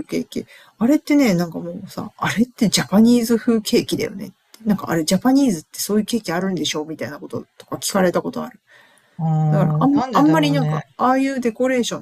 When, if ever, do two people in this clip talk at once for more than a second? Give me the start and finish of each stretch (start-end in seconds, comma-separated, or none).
9.5-10.8